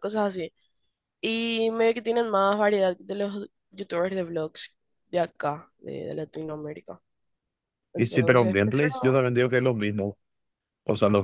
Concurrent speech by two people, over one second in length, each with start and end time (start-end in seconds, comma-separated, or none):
8.0-9.2